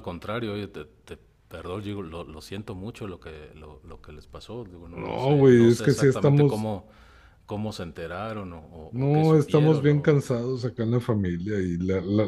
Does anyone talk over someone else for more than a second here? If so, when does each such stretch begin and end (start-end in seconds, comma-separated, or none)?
4.9-6.7, 8.9-10.2